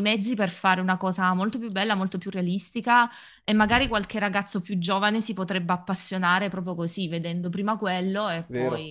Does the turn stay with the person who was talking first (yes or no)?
no